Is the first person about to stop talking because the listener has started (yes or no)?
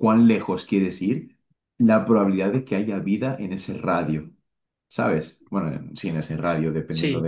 yes